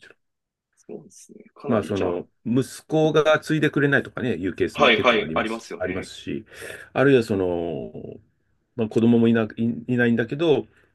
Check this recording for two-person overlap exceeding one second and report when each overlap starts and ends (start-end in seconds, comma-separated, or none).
4.7-6.1